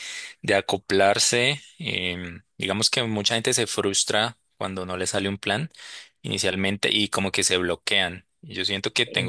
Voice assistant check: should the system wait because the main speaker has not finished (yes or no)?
yes